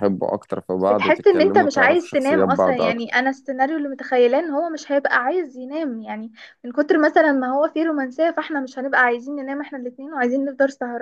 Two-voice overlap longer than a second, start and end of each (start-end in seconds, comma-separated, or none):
0.8-3.2